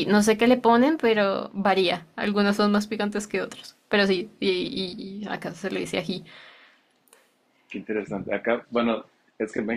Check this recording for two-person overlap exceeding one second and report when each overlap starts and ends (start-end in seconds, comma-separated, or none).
none